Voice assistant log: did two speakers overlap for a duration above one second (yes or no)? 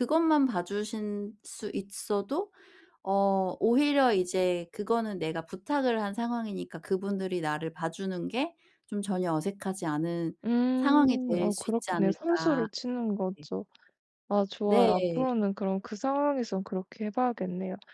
yes